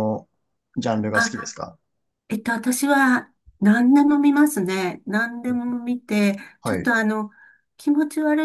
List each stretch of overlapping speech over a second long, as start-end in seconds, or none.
none